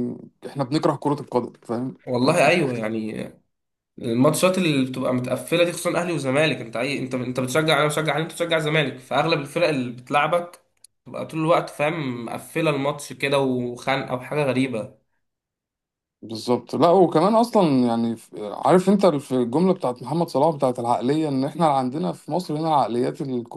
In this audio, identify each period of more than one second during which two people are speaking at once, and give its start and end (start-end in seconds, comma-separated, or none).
none